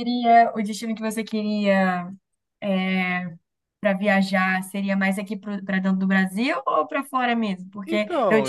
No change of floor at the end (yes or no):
yes